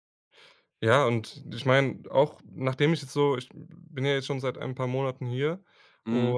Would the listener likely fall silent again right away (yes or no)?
yes